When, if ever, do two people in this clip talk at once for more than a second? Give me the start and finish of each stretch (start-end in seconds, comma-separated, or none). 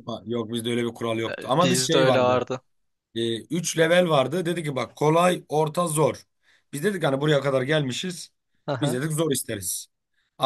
1.3-2.5